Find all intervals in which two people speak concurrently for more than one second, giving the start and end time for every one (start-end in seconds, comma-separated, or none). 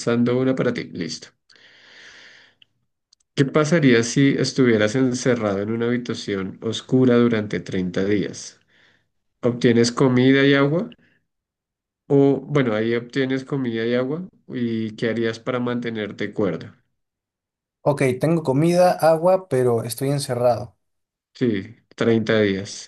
none